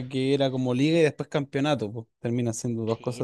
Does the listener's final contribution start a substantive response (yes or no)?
yes